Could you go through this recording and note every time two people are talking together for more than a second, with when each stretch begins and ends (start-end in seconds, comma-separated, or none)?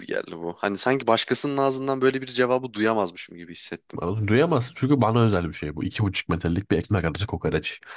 none